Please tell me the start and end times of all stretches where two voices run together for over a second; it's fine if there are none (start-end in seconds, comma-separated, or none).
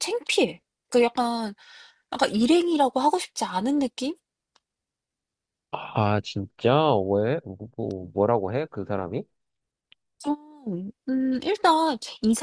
none